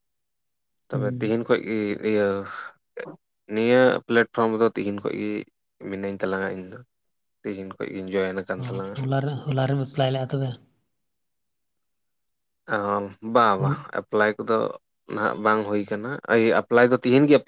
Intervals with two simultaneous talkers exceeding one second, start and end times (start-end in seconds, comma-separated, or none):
none